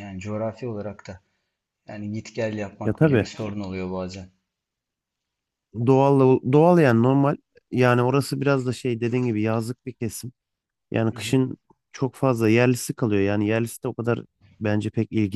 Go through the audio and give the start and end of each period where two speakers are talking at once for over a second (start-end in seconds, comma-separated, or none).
none